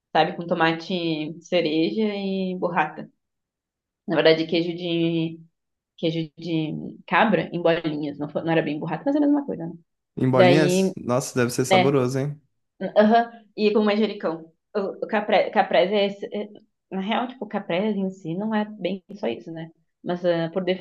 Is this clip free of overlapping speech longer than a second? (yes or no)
yes